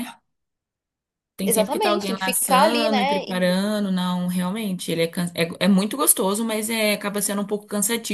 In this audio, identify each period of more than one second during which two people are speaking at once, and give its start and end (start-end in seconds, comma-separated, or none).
1.4-3.2